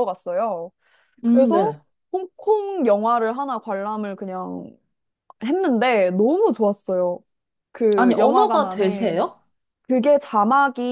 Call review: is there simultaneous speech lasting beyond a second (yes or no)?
yes